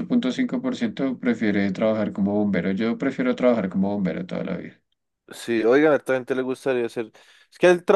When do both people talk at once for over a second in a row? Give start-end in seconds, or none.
none